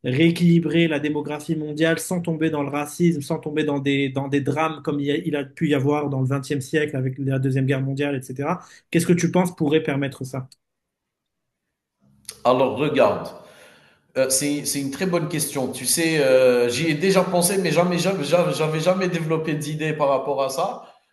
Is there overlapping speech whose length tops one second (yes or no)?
no